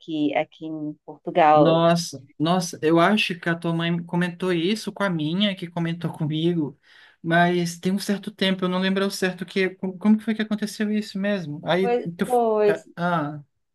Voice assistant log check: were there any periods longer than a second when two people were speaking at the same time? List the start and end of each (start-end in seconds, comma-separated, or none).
none